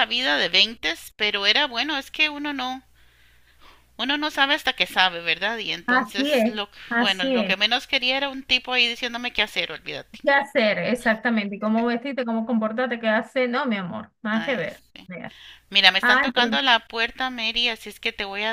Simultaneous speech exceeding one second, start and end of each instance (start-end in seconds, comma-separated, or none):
5.8-7.5